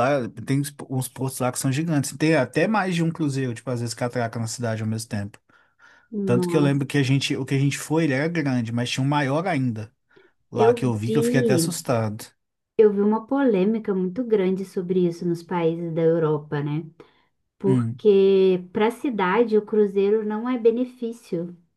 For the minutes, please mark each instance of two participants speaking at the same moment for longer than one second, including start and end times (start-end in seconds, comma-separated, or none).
10.5-11.8